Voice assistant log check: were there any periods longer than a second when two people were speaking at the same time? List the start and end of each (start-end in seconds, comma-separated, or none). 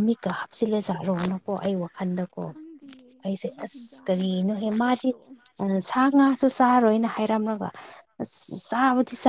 3.5-5.1